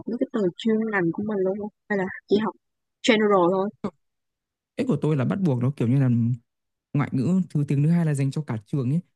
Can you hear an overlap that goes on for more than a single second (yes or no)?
no